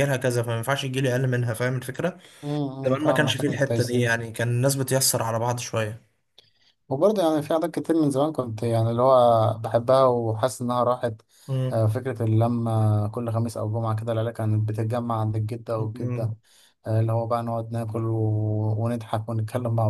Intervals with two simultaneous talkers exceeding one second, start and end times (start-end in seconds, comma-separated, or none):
2.9-4.1